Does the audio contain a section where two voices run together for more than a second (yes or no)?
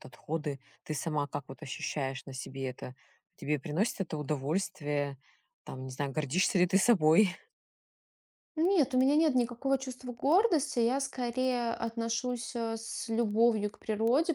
no